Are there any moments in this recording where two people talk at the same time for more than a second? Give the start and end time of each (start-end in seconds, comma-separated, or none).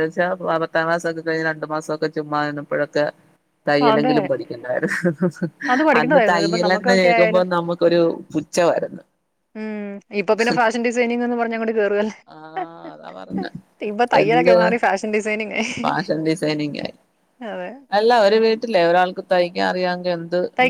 6.0-7.4